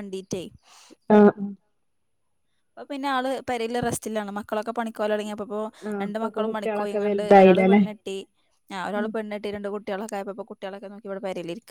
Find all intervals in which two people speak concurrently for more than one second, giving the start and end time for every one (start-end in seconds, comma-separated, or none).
6.0-7.8